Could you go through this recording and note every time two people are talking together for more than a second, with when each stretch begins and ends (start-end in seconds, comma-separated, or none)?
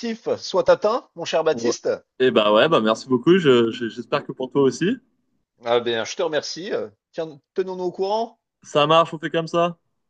none